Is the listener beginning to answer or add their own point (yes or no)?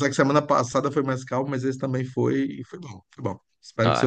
yes